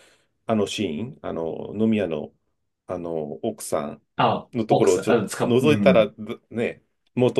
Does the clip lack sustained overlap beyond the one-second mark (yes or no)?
no